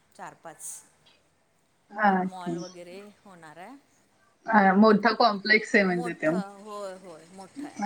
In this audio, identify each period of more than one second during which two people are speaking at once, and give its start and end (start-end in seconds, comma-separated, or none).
none